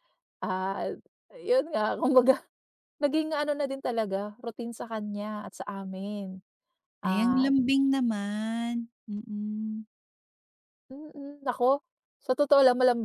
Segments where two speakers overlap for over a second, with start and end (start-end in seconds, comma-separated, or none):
none